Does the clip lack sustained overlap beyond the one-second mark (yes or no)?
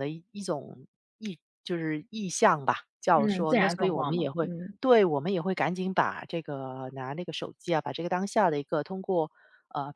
no